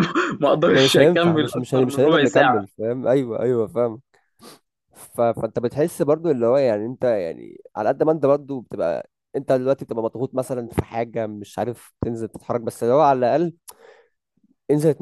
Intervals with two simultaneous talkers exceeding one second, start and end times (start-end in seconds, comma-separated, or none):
0.7-2.6